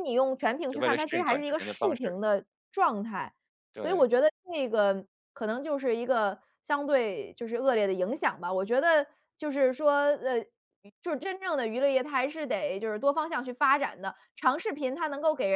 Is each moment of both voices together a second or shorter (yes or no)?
no